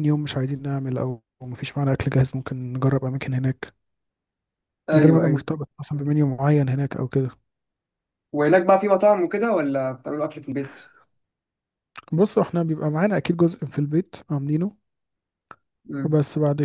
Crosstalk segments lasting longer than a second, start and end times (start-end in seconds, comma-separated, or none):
none